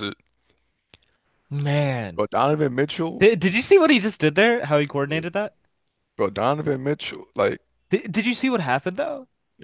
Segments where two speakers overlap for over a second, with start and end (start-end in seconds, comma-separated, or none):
none